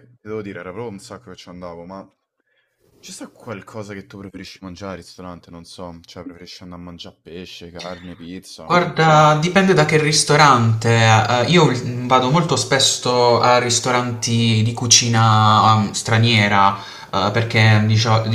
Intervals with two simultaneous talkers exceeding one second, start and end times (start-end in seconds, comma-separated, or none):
none